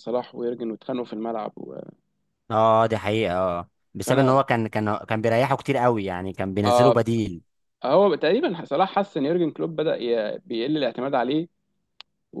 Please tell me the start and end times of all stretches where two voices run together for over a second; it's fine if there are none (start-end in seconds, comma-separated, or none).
none